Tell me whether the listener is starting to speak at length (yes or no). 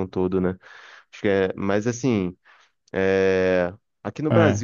no